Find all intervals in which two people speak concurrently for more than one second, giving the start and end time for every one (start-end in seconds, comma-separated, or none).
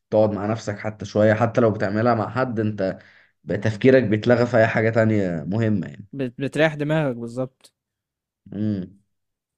none